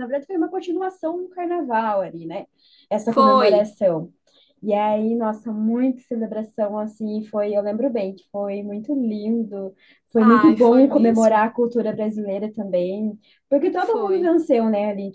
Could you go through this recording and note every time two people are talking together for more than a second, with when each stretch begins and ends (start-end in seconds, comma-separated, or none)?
10.2-11.4